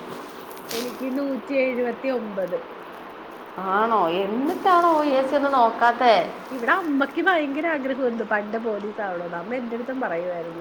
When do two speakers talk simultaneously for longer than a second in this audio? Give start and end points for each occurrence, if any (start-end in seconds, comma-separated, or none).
none